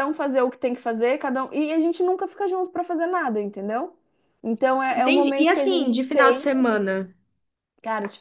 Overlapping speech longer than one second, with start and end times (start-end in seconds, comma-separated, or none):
4.9-6.6